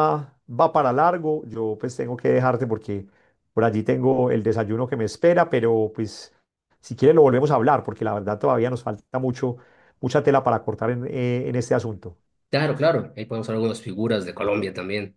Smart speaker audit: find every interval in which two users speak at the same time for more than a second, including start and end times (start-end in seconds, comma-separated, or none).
none